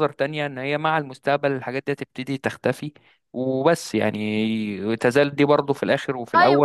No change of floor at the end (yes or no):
no